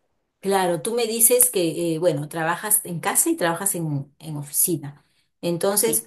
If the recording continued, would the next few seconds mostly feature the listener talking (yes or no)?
no